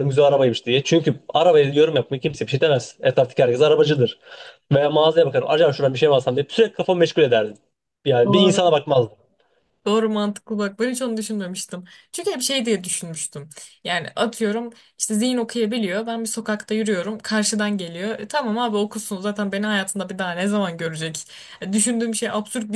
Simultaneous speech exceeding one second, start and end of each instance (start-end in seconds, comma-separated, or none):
none